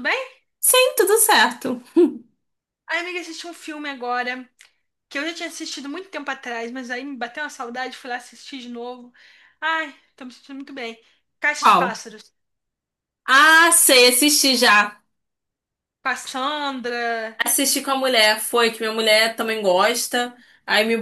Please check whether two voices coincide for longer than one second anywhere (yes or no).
no